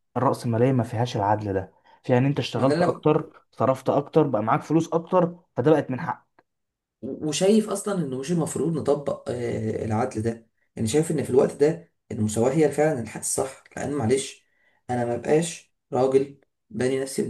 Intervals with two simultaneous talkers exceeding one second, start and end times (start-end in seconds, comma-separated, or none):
none